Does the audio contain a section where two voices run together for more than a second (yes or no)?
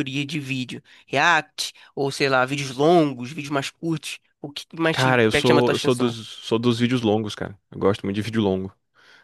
yes